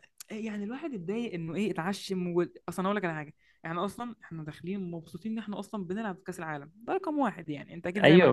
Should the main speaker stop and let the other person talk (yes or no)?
yes